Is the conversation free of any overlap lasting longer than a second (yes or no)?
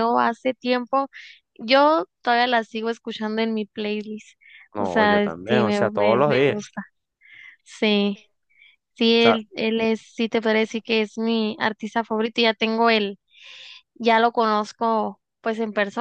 no